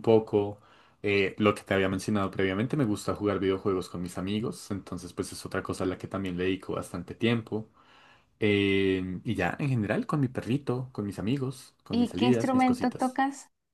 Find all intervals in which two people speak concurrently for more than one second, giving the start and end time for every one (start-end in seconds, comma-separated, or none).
11.9-13.2